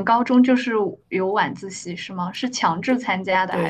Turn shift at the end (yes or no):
yes